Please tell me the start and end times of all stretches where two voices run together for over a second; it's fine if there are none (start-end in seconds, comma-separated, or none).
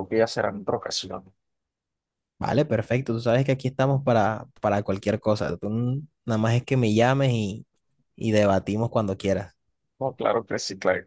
none